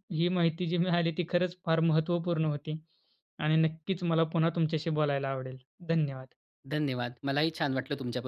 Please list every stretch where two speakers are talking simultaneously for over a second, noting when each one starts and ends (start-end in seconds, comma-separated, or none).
none